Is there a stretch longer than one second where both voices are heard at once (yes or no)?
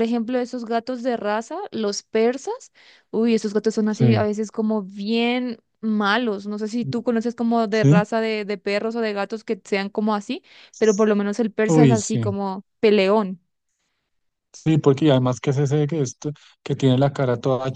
no